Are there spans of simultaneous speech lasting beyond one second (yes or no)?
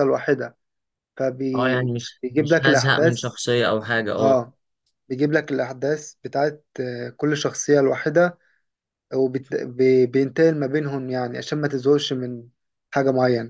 yes